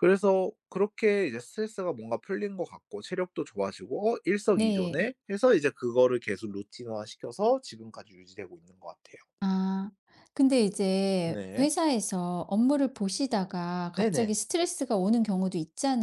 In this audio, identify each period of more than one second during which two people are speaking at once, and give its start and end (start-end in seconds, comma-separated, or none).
none